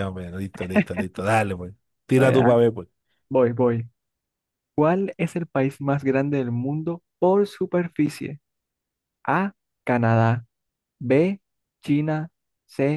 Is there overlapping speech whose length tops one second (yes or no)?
no